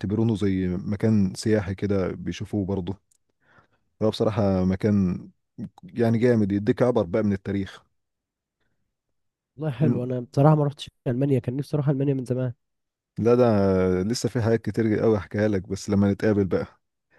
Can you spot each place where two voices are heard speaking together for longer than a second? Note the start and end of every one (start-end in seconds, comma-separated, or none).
none